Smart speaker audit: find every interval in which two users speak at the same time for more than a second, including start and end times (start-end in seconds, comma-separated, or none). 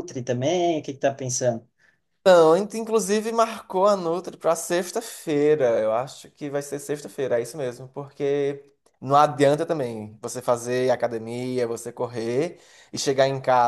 none